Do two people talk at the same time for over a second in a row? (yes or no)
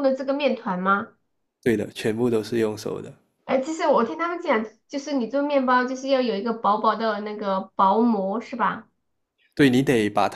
no